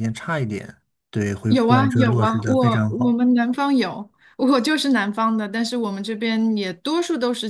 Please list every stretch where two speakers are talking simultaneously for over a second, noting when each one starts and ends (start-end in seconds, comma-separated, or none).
1.5-3.2